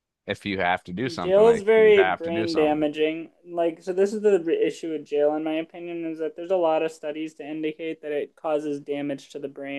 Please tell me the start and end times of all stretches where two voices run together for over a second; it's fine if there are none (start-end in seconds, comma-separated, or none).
1.2-2.9